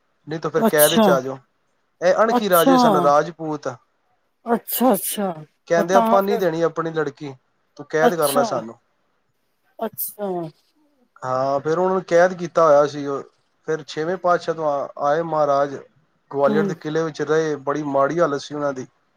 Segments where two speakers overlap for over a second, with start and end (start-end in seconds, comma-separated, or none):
none